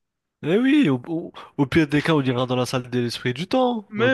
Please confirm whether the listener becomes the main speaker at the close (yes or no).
yes